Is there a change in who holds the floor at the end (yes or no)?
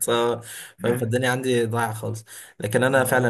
no